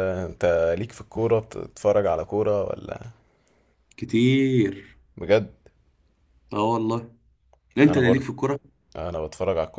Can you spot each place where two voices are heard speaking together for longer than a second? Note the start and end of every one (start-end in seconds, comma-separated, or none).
none